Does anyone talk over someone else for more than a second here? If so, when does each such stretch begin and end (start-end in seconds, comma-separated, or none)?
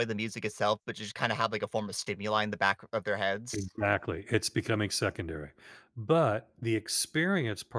none